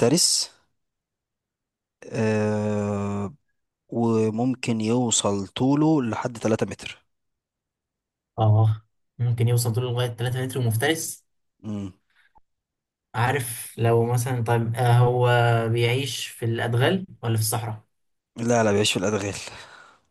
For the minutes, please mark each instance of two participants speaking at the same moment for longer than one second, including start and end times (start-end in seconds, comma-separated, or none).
none